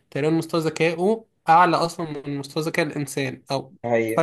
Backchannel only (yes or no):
yes